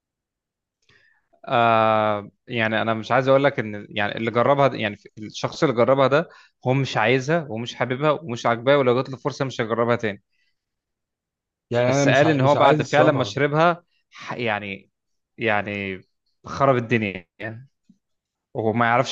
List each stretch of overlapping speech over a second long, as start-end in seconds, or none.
11.8-13.4